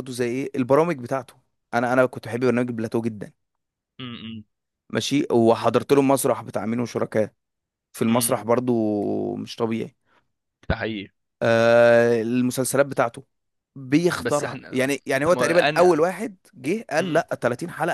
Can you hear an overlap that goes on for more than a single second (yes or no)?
yes